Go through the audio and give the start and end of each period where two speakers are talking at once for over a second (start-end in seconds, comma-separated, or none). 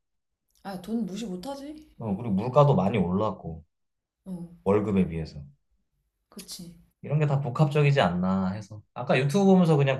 none